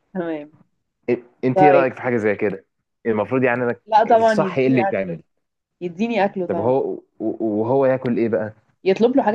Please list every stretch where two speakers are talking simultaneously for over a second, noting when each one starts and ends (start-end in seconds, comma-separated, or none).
3.9-5.2